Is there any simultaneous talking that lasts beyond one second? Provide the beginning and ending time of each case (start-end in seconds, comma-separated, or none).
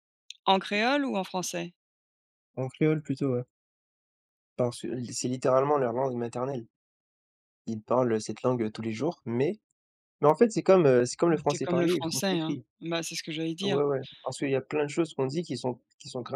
11.3-12.7